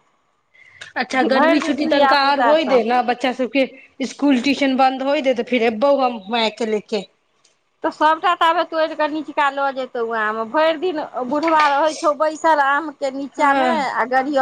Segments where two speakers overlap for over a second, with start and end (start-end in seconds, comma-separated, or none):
1.1-2.8